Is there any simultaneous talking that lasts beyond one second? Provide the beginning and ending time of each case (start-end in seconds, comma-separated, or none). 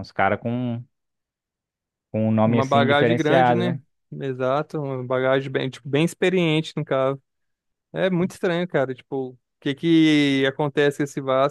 2.4-3.8